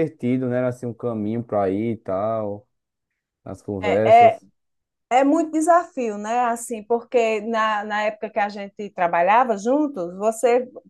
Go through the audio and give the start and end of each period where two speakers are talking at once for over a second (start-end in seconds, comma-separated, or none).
none